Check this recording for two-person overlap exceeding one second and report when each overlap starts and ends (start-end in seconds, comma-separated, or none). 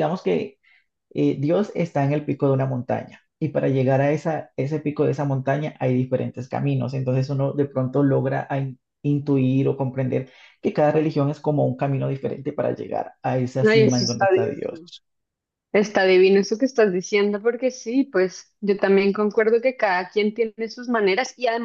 13.7-14.9